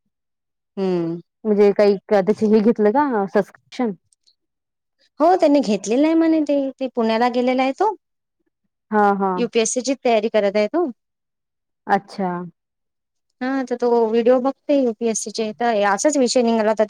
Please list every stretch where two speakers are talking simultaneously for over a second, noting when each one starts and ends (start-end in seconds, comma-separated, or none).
none